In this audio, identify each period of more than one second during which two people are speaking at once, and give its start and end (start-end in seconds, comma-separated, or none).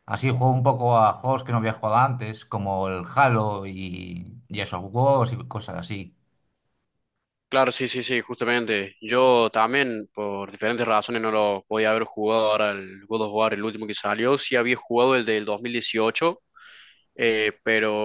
none